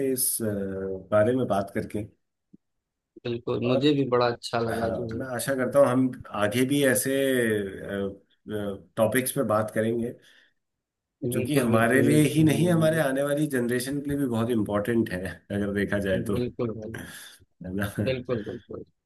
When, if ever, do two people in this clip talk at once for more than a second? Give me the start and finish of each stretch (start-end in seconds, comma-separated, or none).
11.3-13.0